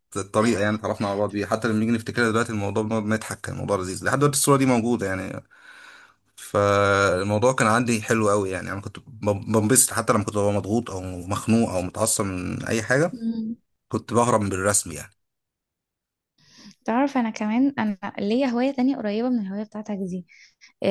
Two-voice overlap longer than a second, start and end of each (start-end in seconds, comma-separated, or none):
none